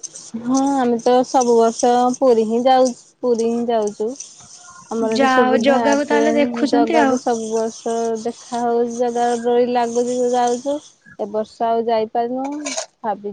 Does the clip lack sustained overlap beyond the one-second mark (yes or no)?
no